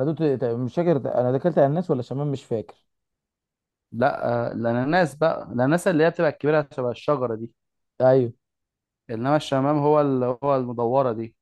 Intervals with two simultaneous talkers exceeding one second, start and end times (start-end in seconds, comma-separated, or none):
none